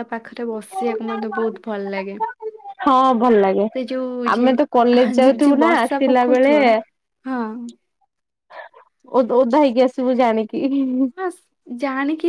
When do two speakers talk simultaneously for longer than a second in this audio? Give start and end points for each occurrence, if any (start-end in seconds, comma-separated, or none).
4.3-6.2